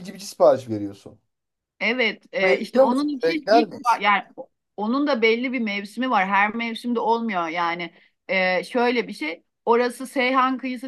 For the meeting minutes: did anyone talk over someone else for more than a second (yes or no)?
yes